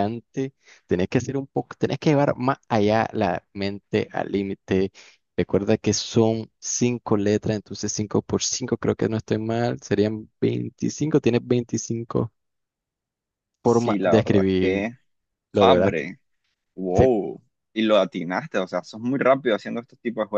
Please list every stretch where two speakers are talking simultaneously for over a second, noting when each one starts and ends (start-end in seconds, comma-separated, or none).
13.6-14.9